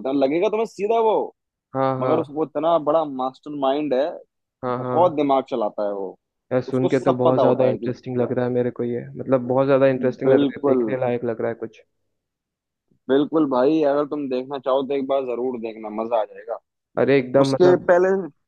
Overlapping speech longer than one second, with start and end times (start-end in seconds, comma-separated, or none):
6.7-8.3